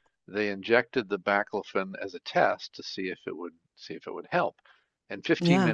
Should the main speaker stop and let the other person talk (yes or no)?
no